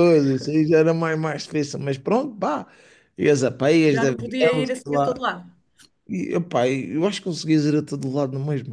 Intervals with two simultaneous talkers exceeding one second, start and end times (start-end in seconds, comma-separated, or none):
3.9-5.2